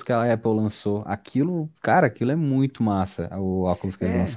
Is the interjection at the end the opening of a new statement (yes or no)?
yes